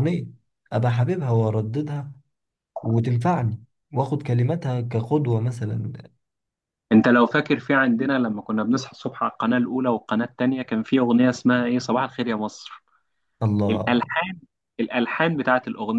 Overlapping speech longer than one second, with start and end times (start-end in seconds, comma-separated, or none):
none